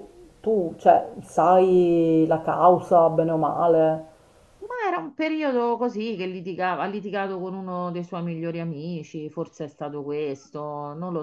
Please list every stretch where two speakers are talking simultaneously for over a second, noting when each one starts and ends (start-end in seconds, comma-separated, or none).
none